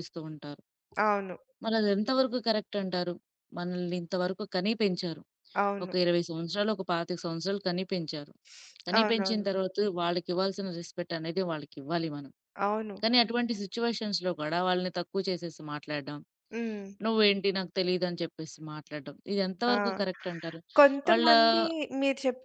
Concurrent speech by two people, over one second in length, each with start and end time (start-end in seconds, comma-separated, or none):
none